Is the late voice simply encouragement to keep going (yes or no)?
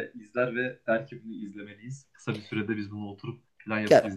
no